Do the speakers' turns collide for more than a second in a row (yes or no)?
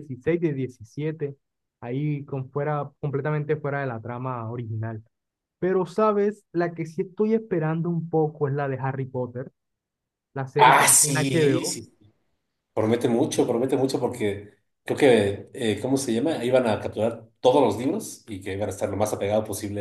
yes